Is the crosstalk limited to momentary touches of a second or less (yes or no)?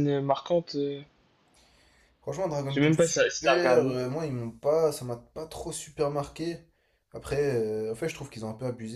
no